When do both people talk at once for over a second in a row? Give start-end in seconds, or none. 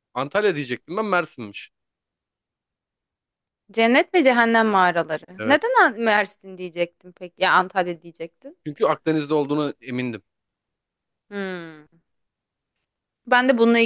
none